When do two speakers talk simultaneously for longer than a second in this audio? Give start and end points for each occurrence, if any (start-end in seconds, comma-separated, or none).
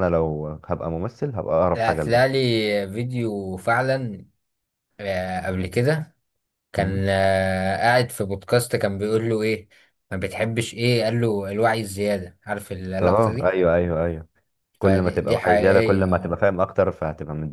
14.8-16.4